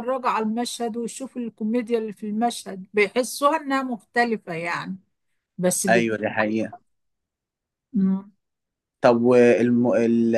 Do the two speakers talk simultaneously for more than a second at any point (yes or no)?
no